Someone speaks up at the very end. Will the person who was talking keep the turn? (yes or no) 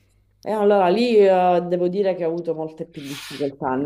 yes